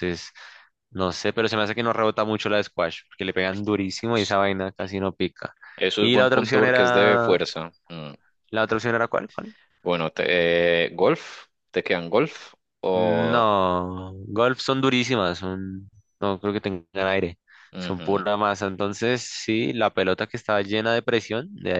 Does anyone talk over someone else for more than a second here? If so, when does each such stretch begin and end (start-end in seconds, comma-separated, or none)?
6.0-7.4